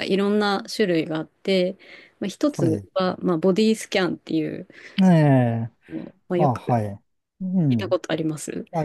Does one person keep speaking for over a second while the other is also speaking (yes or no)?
no